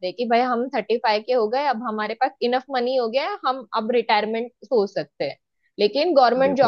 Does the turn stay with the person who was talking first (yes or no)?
yes